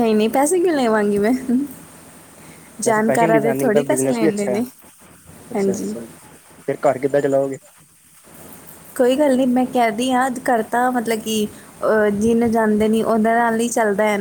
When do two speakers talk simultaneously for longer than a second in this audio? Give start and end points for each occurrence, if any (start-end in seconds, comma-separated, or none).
2.9-4.6